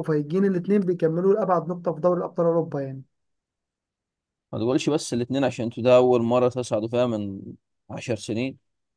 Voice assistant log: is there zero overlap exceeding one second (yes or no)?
yes